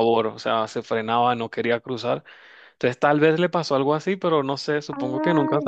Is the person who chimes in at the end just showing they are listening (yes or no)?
no